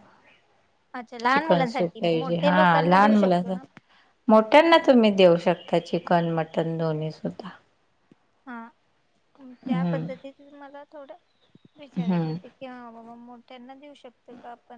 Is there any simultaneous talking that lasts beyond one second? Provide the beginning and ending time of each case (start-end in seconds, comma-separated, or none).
1.3-3.5